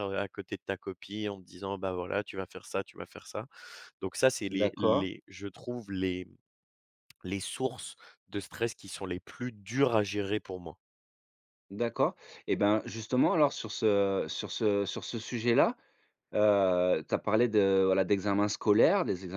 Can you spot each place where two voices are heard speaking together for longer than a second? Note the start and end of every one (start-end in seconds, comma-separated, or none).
none